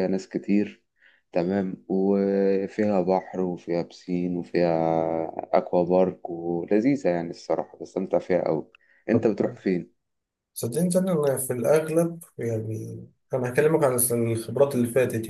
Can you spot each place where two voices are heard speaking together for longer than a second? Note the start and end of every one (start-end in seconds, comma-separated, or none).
none